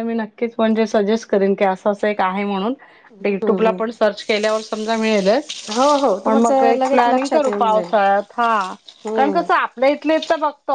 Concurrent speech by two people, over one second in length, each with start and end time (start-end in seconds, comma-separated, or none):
6.3-7.9